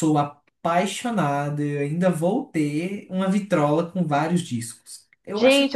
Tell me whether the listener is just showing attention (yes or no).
no